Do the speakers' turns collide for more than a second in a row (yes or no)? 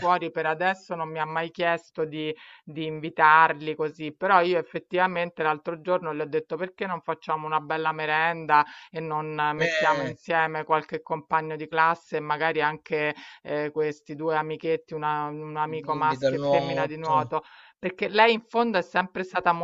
yes